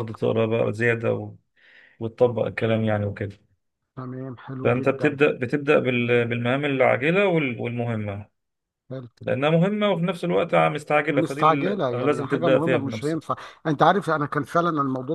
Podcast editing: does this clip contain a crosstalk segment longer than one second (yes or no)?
yes